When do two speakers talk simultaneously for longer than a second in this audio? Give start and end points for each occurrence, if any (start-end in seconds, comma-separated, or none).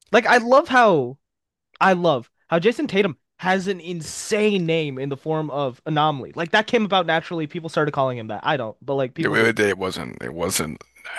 none